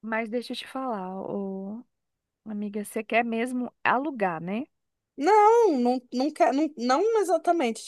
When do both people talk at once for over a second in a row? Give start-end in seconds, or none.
none